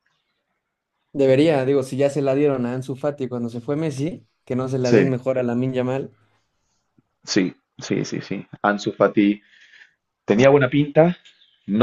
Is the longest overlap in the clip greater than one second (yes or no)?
no